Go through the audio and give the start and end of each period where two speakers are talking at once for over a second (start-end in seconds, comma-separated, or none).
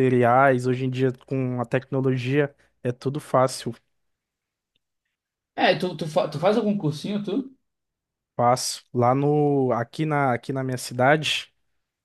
none